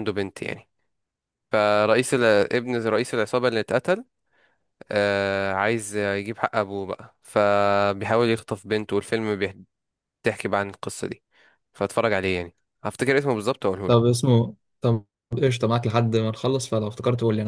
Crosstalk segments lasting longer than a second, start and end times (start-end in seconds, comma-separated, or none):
none